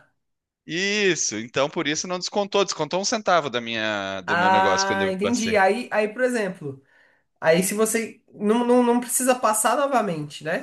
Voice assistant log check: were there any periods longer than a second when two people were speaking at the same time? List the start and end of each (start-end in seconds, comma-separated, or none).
4.2-5.6